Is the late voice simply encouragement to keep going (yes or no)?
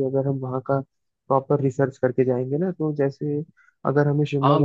no